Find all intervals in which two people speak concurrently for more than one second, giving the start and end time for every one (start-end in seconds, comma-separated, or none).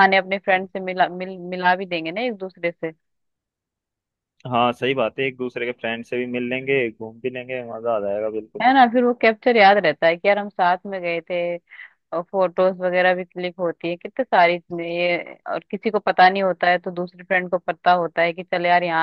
none